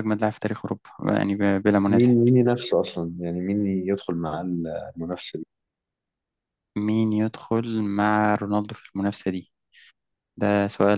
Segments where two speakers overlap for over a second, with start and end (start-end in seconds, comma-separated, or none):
none